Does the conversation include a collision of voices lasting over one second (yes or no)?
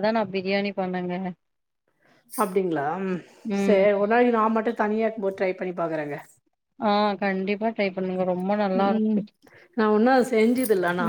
no